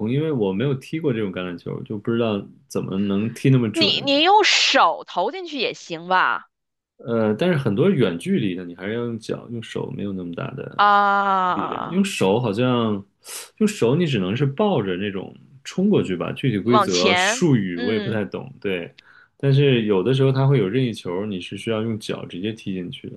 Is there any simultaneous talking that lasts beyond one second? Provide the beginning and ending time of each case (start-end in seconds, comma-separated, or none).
16.6-18.2